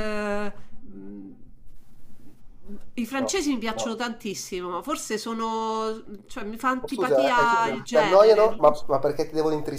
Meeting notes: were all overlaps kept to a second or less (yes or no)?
no